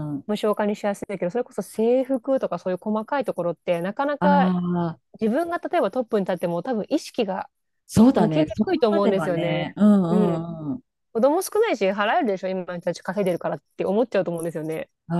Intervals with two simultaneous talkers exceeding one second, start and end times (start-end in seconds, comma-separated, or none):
8.2-10.5